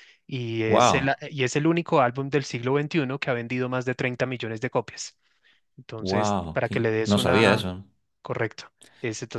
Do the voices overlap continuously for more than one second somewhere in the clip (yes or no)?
yes